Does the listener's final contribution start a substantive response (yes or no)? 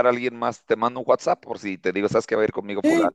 yes